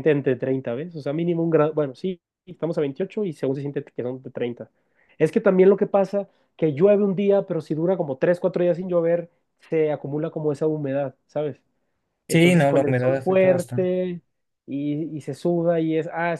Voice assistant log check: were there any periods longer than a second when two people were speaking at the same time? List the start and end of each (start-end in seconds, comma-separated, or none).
12.3-13.9